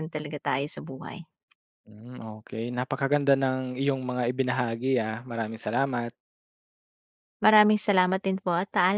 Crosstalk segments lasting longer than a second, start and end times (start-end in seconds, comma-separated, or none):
none